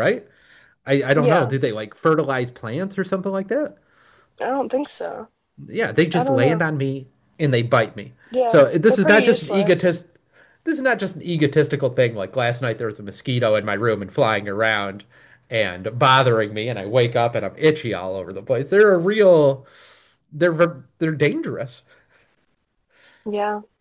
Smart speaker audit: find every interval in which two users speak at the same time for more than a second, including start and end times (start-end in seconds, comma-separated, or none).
8.3-10.0